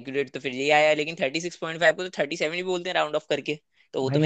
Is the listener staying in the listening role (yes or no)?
no